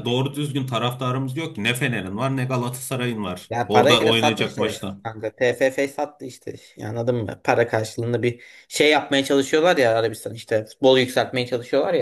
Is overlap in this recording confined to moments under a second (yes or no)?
no